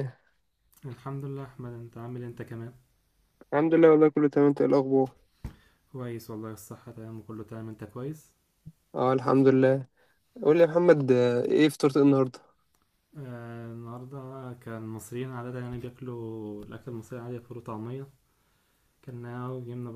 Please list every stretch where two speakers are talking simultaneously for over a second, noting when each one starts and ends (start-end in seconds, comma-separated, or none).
none